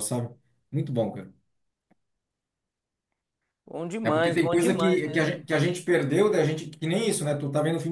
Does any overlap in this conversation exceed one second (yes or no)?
yes